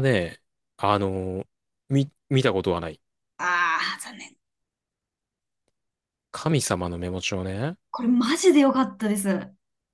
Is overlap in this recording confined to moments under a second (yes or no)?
yes